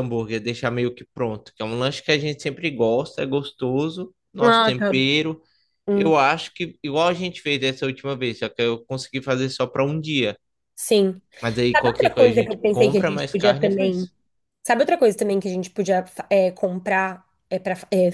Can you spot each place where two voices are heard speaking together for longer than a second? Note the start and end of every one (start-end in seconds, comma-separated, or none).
11.8-14.1